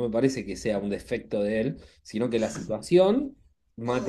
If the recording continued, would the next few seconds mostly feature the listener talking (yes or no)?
no